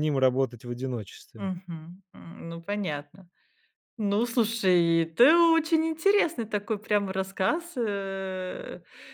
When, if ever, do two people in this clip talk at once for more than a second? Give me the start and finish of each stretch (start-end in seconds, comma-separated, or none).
none